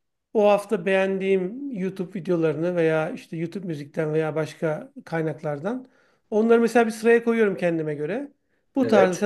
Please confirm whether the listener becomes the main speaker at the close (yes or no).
no